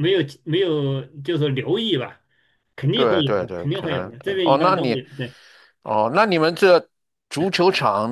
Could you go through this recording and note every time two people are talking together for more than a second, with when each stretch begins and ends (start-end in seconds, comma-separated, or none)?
2.9-5.0